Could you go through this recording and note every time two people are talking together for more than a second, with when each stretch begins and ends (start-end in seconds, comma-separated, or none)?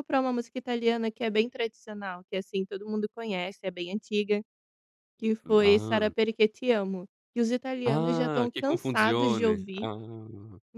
7.8-9.9